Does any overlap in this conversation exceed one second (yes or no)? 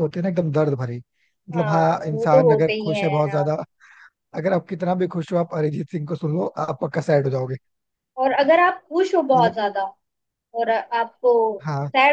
yes